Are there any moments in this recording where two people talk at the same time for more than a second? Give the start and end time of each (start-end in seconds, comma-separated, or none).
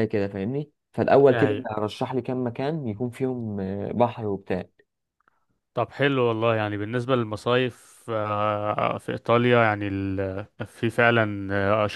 none